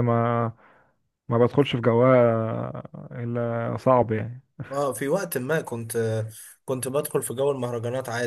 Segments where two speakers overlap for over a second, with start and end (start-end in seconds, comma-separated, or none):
none